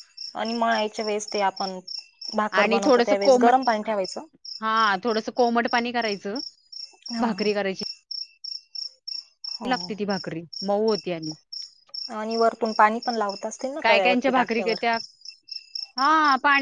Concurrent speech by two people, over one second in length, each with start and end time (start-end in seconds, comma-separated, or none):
none